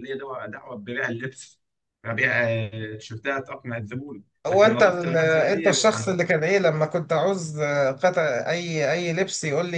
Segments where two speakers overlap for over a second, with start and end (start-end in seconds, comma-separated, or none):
4.5-6.2